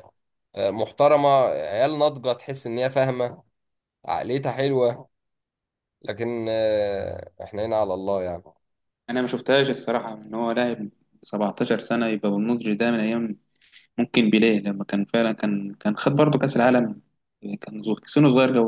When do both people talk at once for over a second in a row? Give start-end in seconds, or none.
none